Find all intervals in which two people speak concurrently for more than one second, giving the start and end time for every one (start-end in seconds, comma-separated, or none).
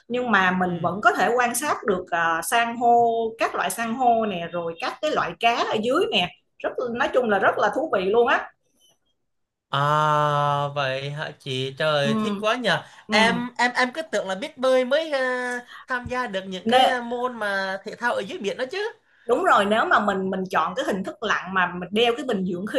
none